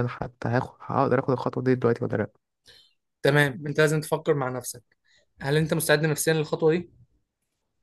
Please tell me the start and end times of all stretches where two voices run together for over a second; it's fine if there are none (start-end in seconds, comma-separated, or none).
none